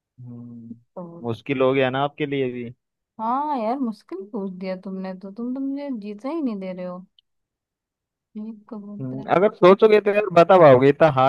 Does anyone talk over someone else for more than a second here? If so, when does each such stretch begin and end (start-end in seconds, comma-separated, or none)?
none